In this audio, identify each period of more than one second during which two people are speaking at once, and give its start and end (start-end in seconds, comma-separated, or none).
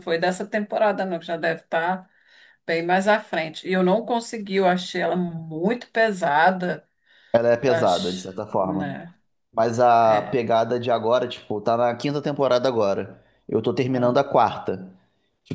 7.7-9.0